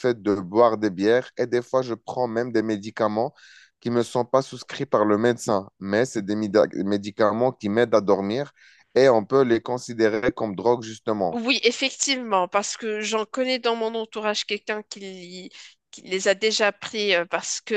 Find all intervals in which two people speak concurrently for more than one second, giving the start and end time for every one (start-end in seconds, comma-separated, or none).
none